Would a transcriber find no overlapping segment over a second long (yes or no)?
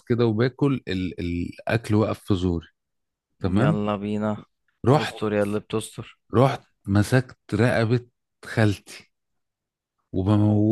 yes